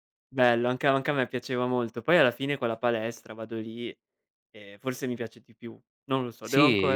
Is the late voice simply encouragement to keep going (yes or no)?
no